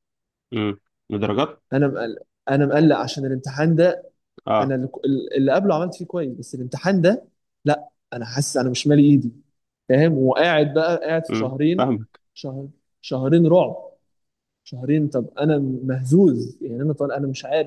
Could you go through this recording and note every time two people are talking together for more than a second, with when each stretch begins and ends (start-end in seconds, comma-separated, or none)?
none